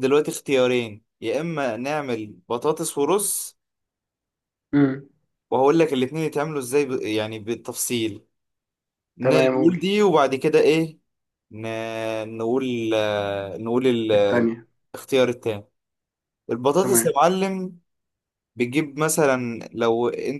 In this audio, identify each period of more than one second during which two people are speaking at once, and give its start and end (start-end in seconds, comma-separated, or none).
none